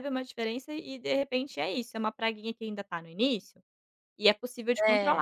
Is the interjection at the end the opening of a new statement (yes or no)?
no